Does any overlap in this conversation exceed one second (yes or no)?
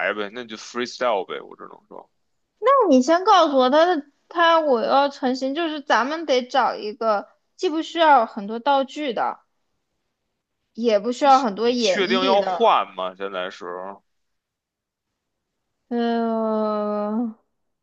yes